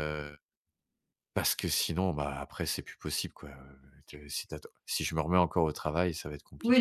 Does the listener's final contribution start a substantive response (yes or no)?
yes